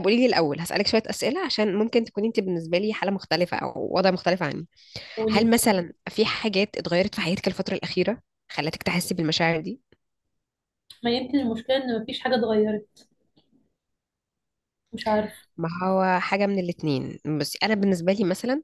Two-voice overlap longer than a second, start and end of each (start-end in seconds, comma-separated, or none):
none